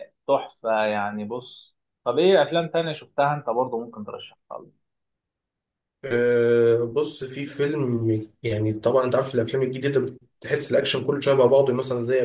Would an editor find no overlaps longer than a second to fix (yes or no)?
yes